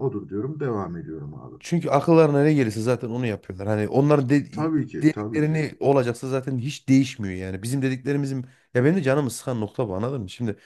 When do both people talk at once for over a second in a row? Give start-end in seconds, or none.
none